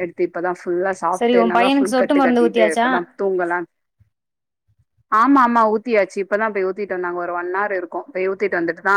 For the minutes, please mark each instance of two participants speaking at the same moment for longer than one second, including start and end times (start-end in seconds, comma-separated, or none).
1.2-2.9